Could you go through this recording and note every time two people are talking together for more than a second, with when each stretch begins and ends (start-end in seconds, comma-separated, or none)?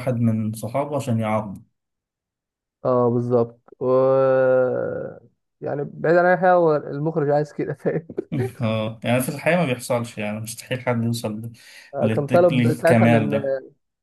12.0-13.2